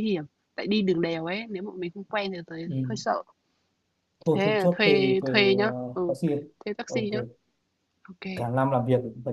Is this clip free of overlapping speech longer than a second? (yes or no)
no